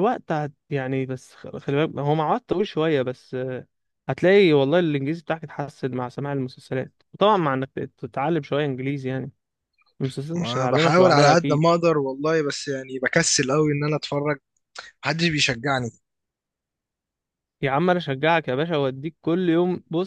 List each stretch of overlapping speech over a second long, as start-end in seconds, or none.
10.3-11.6